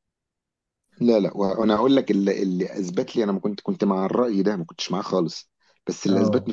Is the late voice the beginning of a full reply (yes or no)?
no